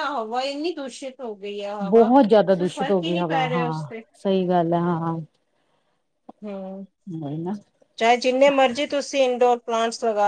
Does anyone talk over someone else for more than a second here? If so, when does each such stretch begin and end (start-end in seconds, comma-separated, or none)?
1.9-4.0